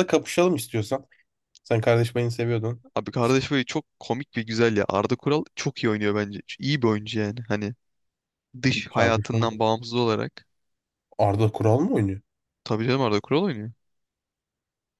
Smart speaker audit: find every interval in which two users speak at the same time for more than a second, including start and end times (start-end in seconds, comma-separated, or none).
none